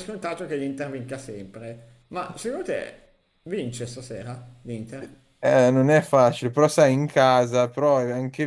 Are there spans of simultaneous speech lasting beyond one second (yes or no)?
no